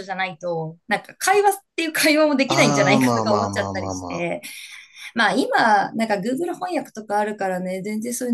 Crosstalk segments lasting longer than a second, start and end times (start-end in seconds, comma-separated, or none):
2.5-4.3